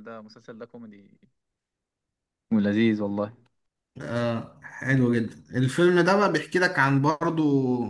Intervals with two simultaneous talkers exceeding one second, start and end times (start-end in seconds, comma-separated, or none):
none